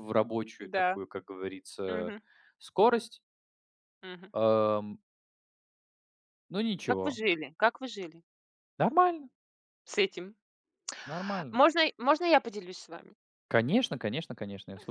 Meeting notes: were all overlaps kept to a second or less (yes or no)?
yes